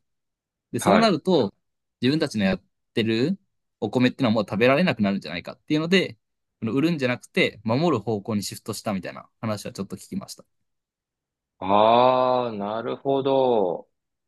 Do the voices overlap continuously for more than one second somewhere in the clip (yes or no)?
no